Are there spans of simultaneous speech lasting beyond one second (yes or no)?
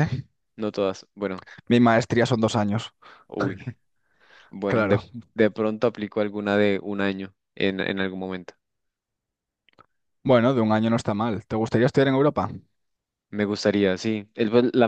no